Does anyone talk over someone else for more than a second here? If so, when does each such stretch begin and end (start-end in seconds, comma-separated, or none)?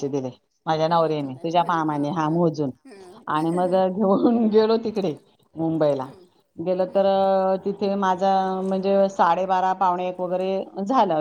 0.9-2.7